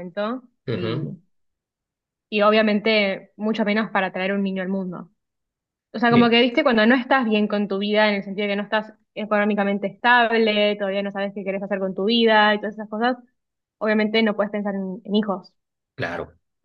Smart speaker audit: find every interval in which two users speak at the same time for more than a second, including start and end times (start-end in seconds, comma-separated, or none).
none